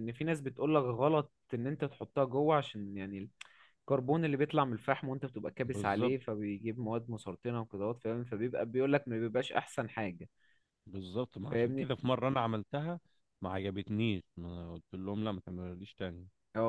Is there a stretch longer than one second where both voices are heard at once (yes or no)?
no